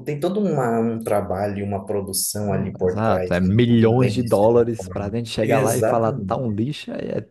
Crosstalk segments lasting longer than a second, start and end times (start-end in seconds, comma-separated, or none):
2.5-6.6